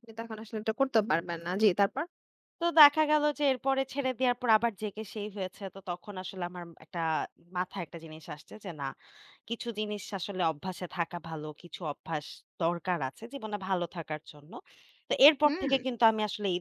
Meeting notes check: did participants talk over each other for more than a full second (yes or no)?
no